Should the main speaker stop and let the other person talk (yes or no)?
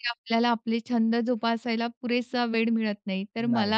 no